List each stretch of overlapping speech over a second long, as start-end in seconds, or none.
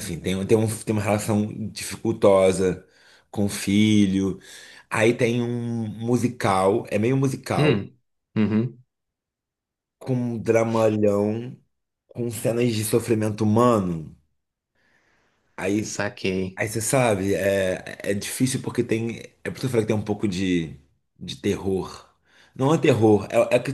none